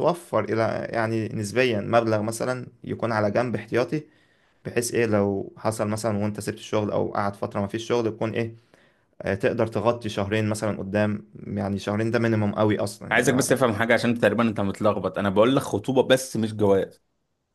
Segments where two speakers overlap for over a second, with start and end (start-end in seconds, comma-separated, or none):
none